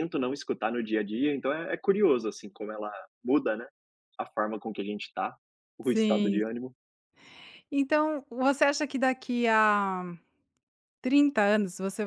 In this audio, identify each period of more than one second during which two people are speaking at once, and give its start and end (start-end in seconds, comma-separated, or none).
none